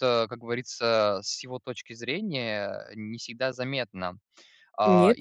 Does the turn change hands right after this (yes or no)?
yes